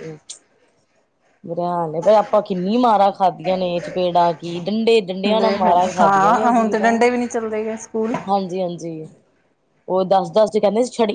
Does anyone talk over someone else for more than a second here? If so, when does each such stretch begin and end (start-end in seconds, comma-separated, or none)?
5.4-7.0